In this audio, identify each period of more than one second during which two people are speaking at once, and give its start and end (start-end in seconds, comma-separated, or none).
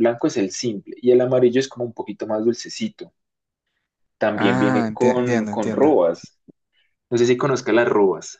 4.3-5.9